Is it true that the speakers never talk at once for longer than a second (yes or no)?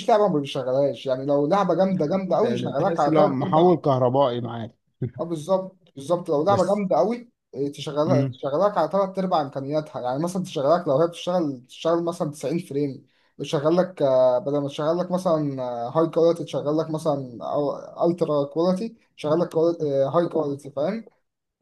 no